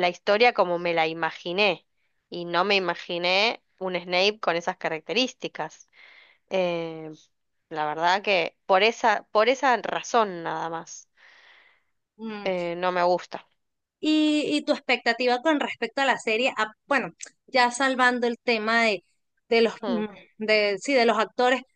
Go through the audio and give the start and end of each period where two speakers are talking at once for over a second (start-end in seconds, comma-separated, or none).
none